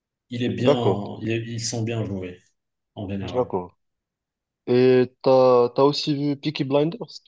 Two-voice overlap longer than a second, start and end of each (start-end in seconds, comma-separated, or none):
none